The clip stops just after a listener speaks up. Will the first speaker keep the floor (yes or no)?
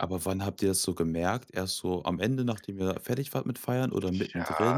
no